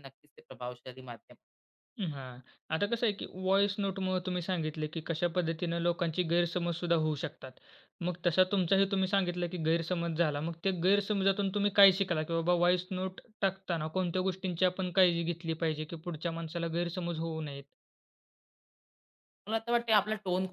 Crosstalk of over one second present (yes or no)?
no